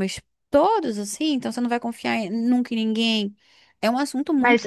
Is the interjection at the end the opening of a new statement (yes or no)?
yes